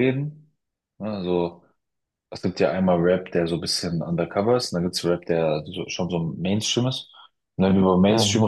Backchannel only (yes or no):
yes